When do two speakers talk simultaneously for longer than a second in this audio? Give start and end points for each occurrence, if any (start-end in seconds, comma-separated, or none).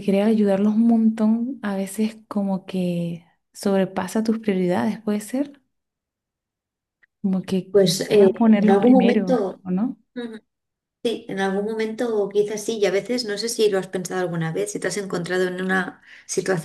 7.7-9.6